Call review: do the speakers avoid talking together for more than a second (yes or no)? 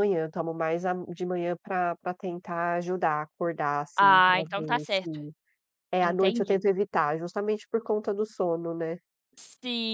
no